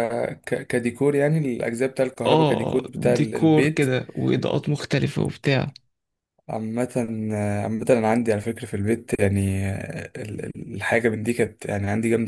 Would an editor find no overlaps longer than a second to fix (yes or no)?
no